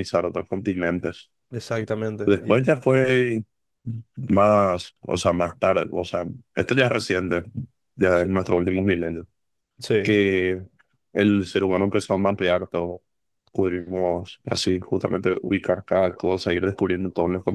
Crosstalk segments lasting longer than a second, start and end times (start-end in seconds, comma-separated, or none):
none